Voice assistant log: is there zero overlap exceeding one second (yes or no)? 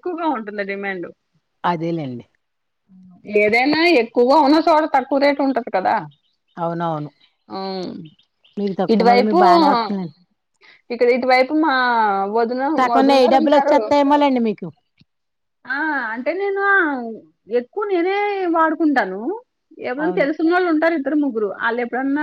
yes